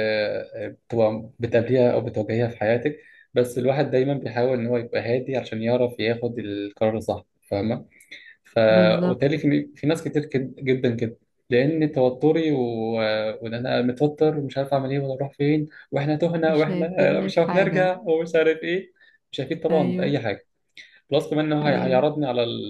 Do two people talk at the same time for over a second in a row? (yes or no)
yes